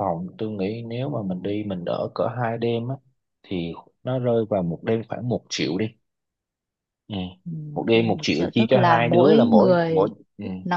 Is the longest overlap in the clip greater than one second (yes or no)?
yes